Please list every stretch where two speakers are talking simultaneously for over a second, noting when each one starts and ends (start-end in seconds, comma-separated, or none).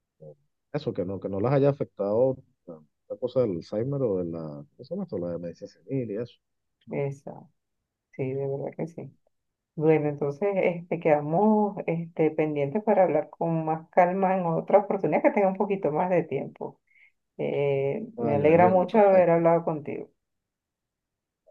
18.2-19.5